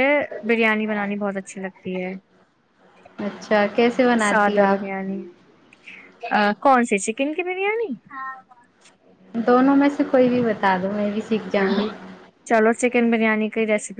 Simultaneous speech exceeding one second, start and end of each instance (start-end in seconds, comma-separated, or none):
none